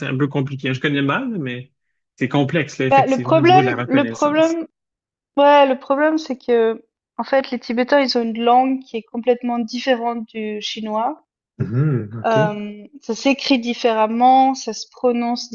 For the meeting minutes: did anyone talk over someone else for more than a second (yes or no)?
yes